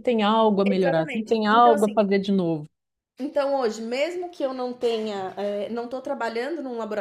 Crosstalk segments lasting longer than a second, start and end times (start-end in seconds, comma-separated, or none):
0.6-2.0